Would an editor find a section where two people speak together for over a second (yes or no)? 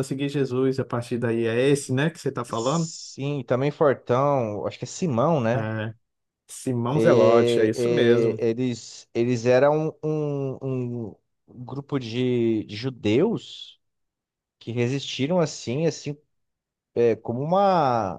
yes